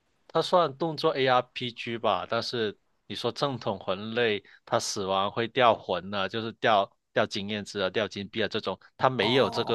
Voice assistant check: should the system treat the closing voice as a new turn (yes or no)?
no